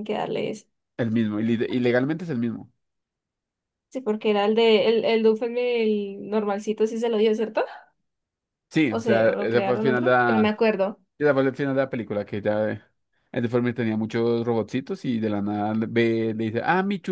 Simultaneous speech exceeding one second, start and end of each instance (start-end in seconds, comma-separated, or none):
8.9-10.7